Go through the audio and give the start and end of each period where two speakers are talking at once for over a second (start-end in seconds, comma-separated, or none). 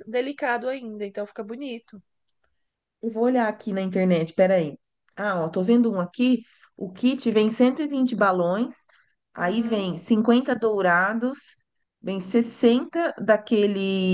none